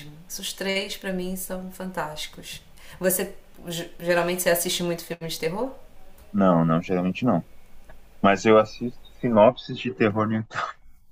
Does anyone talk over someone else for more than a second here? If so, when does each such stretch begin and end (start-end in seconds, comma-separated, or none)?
none